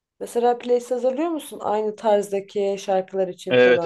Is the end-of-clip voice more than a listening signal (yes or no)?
yes